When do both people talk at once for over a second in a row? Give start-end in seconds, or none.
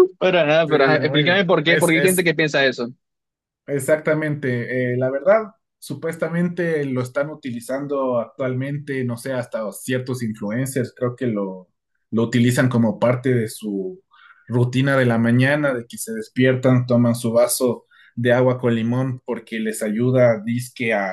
0.7-2.3